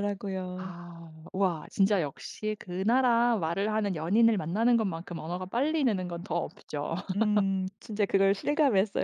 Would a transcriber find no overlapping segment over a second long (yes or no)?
yes